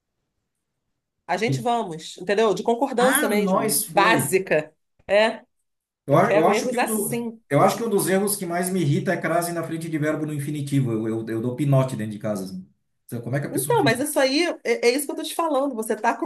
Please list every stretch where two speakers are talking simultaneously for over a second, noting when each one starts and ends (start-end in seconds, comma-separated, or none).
3.0-4.4, 6.1-7.4